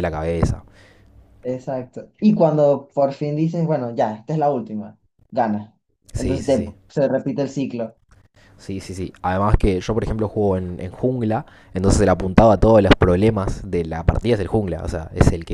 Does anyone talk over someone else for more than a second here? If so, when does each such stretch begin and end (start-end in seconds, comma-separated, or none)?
none